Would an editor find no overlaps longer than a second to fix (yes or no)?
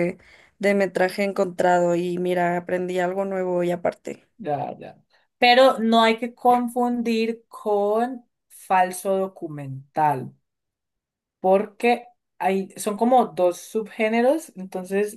yes